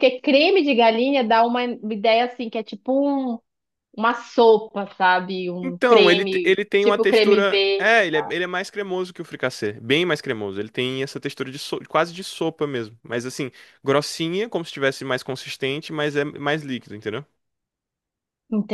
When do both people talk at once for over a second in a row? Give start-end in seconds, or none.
5.6-8.0